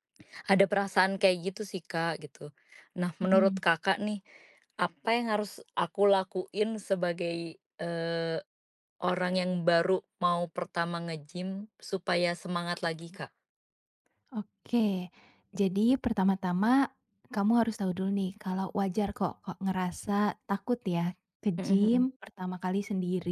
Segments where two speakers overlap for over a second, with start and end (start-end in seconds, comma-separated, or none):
none